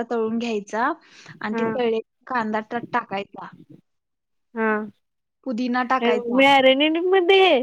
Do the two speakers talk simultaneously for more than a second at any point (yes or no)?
no